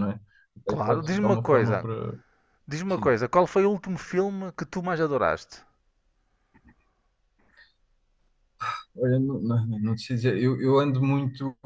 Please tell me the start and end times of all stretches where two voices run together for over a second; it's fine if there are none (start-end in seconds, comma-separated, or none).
0.7-1.9